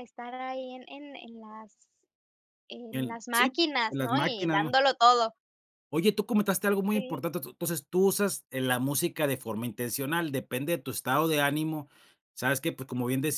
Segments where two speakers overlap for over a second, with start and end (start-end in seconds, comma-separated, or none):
2.9-4.7